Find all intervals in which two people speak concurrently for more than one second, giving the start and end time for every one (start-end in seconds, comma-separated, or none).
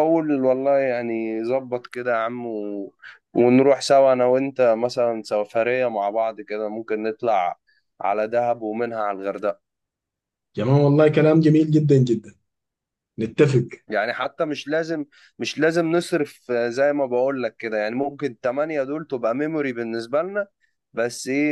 none